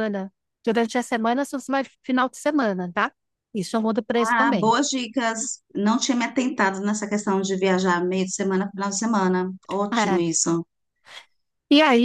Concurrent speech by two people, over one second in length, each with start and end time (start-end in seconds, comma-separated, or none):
none